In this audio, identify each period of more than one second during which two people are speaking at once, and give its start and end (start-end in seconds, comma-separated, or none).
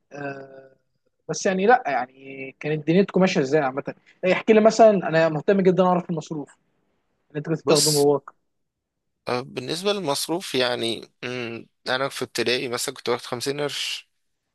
none